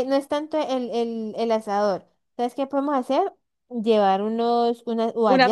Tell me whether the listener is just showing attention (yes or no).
yes